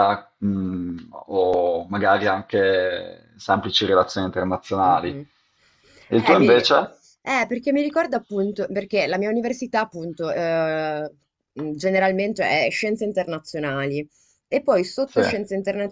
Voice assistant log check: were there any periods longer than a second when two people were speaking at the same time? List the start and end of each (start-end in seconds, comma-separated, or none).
none